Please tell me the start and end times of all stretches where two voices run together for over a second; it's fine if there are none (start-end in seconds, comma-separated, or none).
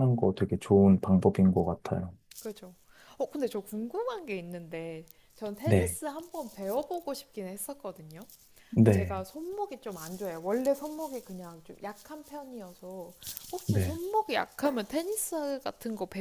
none